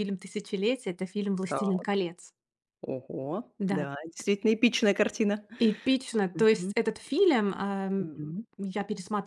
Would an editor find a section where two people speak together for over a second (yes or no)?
no